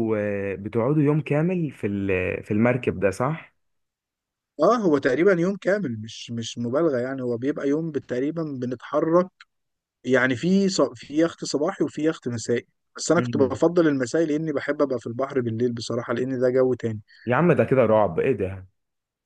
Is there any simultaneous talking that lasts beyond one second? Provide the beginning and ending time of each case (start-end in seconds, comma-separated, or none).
none